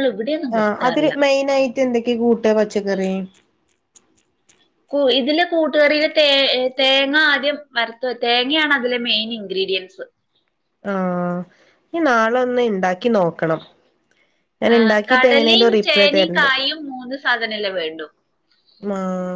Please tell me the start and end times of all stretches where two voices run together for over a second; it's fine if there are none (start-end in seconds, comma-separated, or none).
14.8-16.5